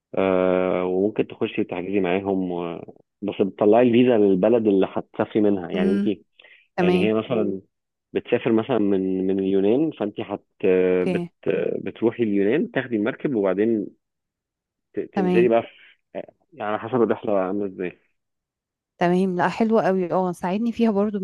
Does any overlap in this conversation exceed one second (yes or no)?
no